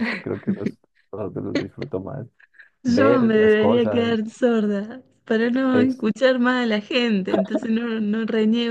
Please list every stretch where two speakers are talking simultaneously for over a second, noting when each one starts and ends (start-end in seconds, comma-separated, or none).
2.9-4.1